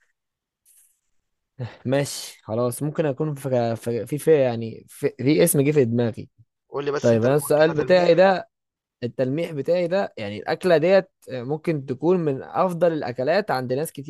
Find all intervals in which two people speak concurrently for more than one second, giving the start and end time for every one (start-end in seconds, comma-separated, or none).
7.0-8.2